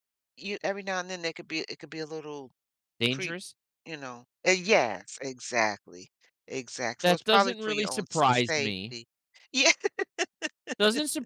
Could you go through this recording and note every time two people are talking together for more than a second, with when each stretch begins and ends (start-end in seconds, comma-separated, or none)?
7.0-8.9